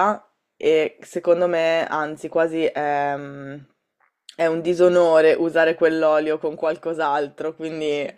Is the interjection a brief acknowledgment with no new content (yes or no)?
yes